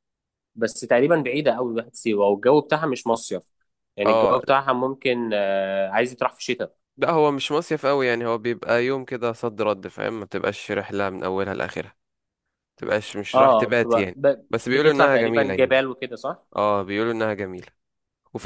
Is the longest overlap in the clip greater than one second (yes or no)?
yes